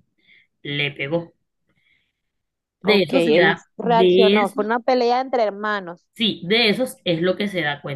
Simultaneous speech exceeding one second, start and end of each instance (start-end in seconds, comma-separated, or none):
2.8-4.6